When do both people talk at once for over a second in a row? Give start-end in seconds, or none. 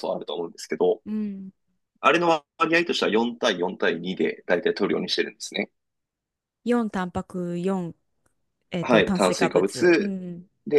8.8-10.2